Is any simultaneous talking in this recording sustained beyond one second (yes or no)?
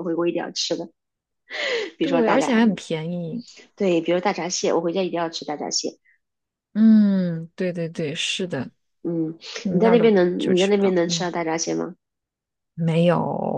yes